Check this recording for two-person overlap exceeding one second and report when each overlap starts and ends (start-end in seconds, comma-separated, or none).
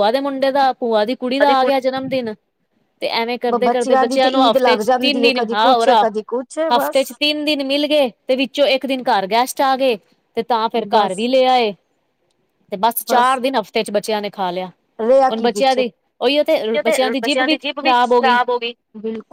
4.0-5.8